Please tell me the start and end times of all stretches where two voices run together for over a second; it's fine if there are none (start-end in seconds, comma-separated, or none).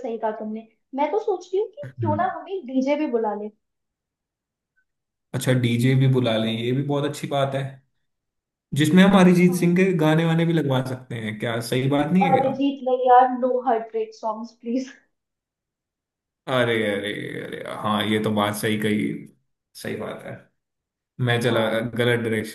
none